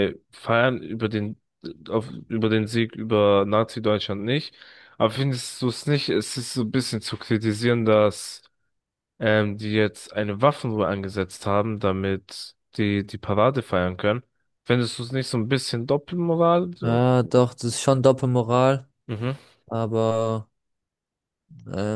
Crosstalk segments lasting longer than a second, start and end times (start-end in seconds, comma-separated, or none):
none